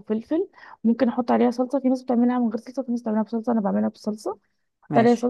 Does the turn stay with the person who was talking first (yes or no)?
yes